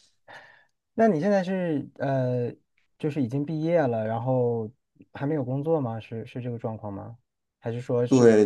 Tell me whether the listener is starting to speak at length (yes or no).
yes